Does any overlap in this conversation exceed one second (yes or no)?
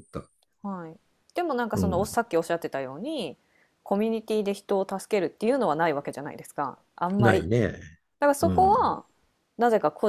no